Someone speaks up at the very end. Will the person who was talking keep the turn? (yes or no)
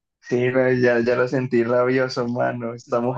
no